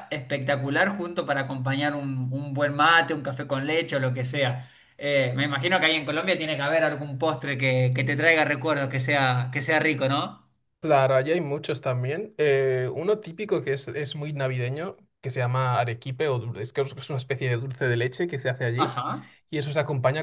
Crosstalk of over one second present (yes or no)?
no